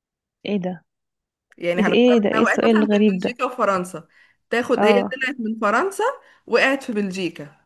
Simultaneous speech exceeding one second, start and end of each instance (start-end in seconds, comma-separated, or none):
1.8-3.4